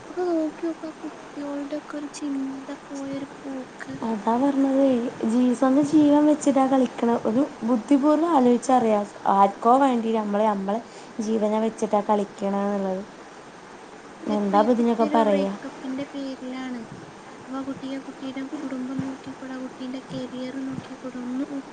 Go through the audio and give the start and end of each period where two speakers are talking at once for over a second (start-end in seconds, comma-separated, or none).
none